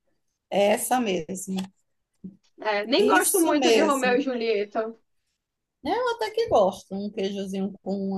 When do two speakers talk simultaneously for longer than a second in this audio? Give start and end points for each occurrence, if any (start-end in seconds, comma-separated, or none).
3.0-4.2